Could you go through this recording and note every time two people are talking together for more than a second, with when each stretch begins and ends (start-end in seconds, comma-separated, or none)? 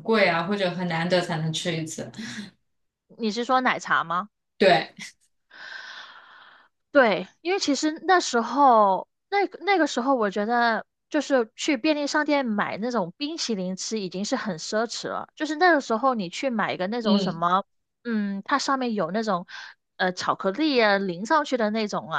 none